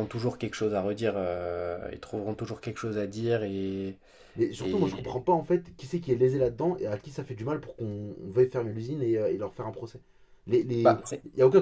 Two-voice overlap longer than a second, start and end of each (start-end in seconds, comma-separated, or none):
none